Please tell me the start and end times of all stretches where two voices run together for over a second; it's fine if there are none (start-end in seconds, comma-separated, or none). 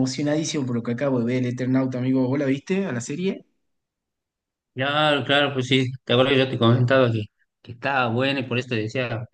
none